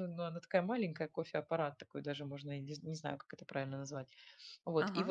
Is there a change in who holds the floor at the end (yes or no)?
no